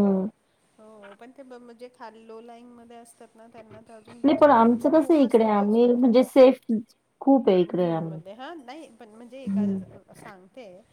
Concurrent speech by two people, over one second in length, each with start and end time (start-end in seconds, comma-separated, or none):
4.2-6.2